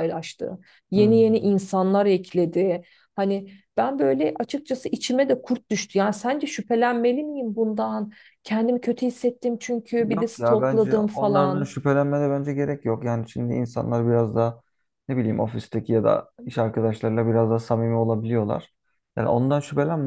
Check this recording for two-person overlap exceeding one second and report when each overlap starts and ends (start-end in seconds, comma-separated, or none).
10.2-11.7